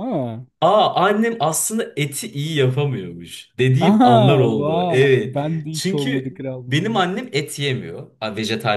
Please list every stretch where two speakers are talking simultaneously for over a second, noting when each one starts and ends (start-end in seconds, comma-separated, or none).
3.8-7.2